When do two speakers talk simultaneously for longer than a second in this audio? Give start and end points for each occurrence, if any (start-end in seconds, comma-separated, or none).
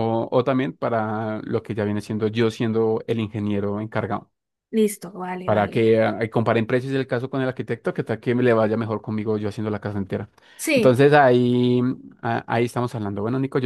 none